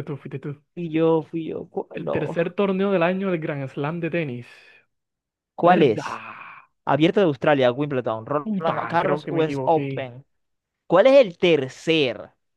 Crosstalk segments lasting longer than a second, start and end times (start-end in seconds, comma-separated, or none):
8.4-10.1